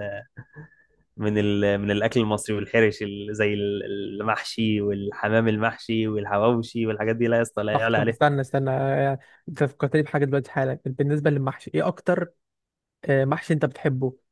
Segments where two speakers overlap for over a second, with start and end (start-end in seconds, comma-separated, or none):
none